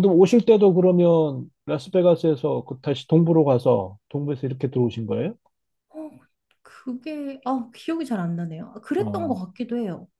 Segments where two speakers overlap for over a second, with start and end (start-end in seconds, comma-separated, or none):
none